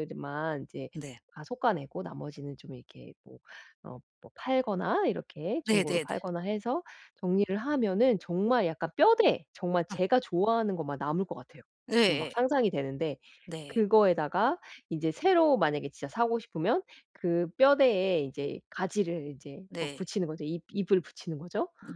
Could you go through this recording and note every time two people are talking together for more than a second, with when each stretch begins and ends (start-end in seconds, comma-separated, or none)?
none